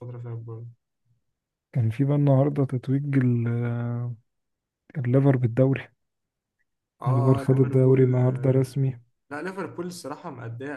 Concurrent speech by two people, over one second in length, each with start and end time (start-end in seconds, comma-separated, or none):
7.1-8.6